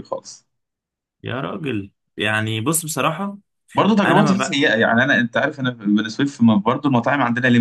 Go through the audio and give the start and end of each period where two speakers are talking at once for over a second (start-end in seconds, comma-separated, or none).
none